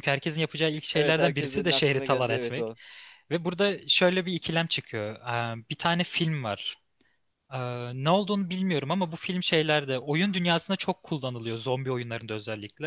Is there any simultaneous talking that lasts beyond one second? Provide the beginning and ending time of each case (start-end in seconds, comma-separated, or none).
0.9-2.7